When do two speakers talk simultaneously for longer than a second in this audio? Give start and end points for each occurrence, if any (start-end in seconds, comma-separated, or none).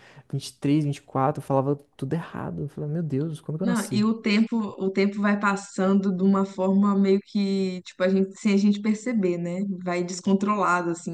none